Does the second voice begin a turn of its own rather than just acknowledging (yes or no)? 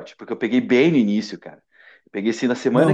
yes